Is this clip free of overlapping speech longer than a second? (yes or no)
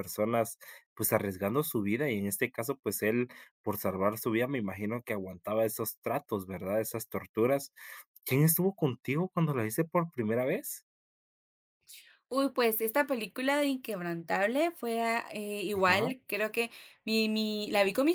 yes